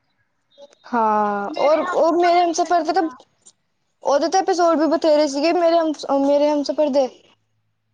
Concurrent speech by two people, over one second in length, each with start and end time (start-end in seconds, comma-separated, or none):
1.6-3.1